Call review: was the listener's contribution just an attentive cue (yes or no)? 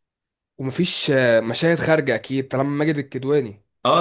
no